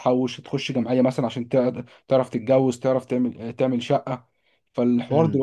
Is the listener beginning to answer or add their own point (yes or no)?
no